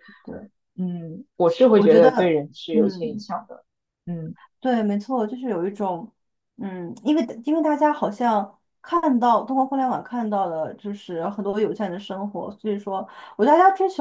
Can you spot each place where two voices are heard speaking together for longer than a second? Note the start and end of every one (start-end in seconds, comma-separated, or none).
1.7-3.3